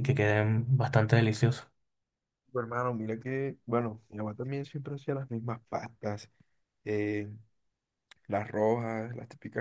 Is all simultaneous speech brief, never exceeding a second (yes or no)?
yes